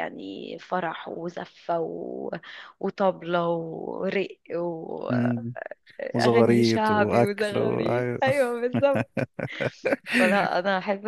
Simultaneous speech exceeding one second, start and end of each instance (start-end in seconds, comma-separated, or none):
6.6-7.8